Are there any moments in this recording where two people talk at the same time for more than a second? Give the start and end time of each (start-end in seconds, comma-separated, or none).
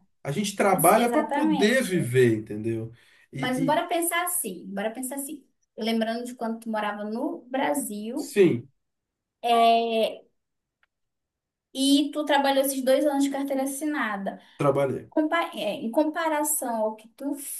0.7-2.1